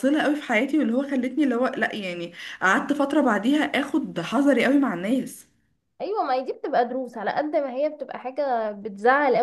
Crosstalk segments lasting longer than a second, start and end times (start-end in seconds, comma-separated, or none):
none